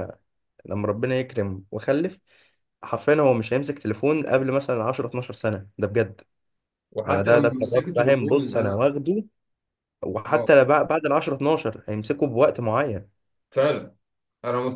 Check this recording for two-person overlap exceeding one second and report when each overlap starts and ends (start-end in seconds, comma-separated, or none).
7.1-8.9